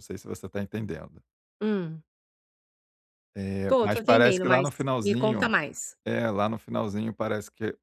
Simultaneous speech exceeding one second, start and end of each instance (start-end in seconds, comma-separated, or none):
3.7-5.5